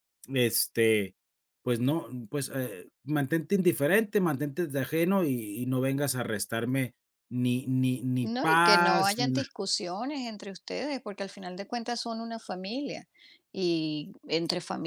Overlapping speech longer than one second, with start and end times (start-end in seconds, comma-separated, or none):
8.2-9.5